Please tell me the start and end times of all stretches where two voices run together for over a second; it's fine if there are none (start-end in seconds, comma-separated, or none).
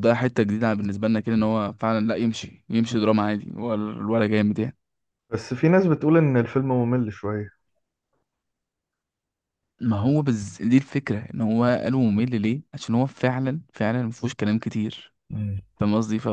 none